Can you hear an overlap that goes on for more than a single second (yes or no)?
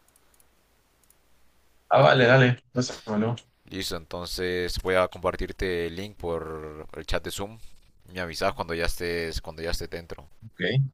no